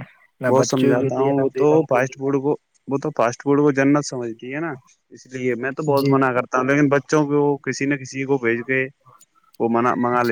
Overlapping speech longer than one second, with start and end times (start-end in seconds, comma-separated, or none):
0.5-2.3